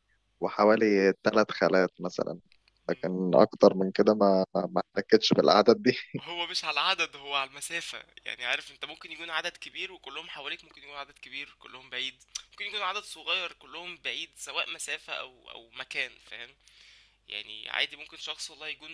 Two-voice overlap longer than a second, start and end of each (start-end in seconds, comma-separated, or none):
none